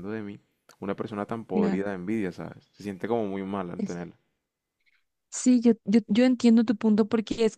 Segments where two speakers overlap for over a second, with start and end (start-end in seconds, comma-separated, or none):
none